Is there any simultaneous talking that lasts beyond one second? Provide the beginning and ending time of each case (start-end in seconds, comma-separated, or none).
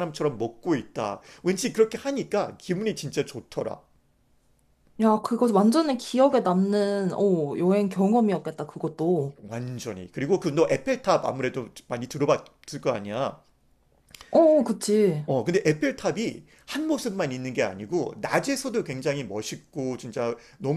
none